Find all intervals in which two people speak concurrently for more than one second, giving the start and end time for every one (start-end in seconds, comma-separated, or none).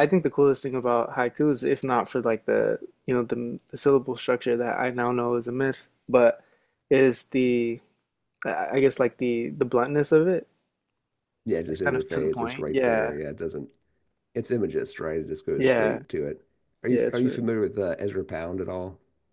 11.7-13.1